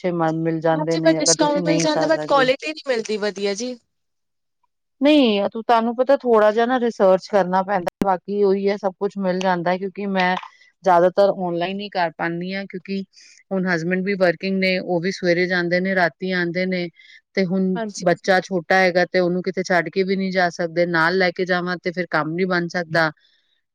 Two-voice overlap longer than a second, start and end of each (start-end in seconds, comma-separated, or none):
0.8-2.5